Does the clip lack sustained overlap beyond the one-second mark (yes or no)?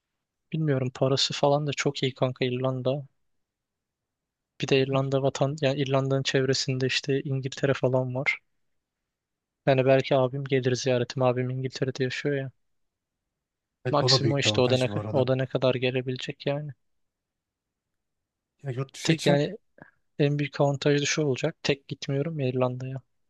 no